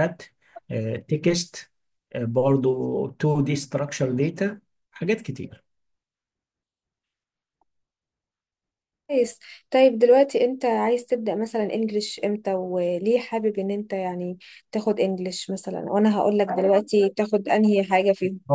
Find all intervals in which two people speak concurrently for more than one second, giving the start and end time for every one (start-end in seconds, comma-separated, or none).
none